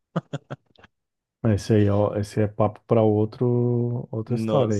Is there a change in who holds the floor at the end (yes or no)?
yes